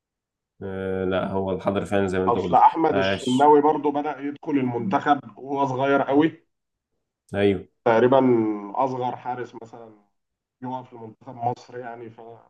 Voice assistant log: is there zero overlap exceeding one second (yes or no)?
no